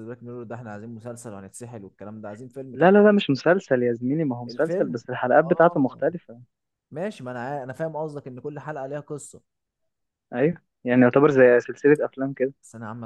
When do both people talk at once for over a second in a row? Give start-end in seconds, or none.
4.5-6.0